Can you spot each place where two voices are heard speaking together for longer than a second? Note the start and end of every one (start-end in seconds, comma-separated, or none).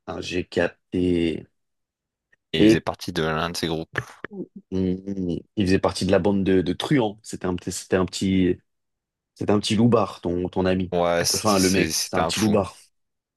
11.3-12.6